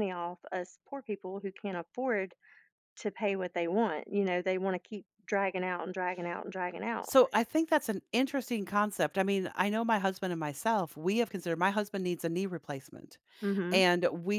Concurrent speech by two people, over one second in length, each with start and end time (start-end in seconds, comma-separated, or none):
none